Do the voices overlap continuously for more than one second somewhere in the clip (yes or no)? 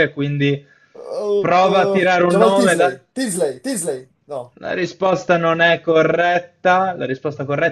yes